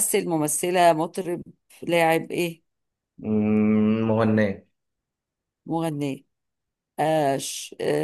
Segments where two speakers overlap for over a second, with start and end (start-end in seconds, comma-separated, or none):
none